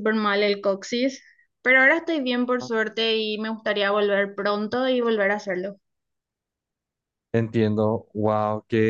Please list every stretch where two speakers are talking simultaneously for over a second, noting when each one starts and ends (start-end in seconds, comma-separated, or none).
none